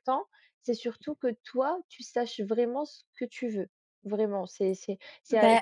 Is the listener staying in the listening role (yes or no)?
yes